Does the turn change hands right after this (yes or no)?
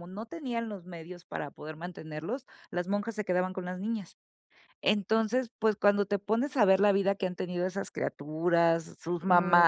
no